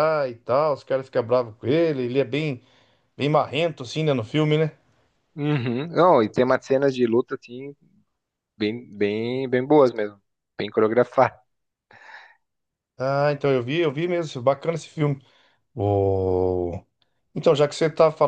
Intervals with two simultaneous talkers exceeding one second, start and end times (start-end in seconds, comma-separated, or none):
none